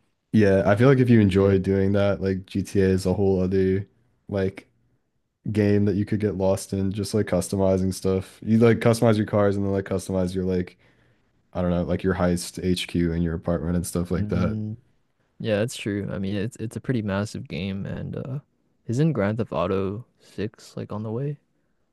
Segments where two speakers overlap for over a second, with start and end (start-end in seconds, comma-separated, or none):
none